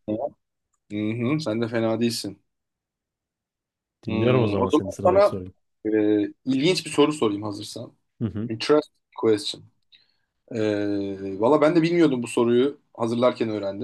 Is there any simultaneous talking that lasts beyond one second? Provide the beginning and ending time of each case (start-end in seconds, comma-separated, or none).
4.1-5.4